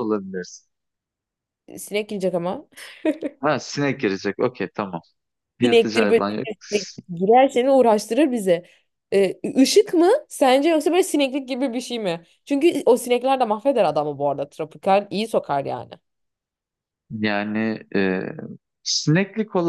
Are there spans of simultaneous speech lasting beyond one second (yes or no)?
yes